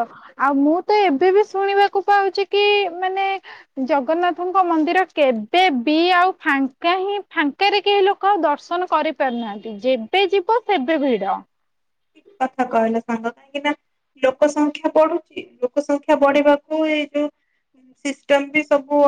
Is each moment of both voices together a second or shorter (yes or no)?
yes